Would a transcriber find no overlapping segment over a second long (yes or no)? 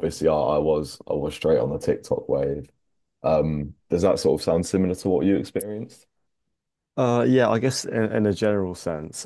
yes